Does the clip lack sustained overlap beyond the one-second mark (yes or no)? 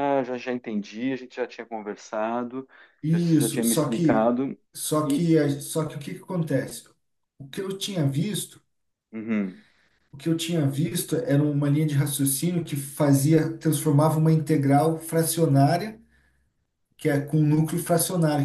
no